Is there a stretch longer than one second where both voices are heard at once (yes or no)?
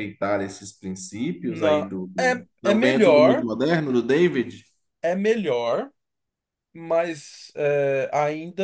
yes